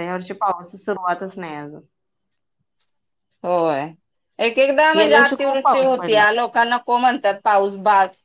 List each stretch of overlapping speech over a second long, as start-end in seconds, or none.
5.0-6.2